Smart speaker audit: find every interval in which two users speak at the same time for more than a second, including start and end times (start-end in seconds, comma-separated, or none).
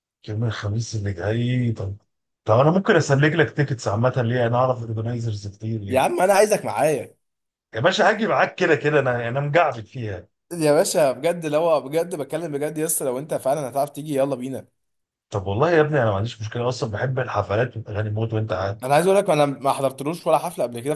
none